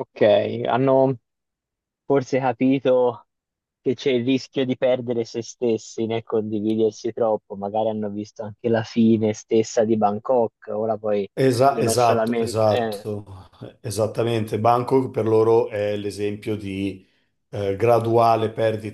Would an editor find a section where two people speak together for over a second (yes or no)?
yes